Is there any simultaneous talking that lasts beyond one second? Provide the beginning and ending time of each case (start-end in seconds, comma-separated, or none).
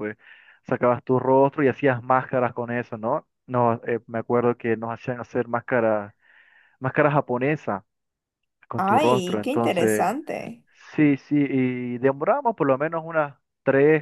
8.8-10.2